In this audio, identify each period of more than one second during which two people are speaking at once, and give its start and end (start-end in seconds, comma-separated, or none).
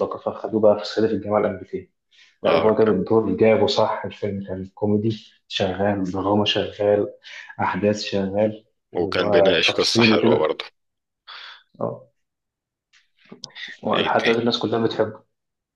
9.0-10.4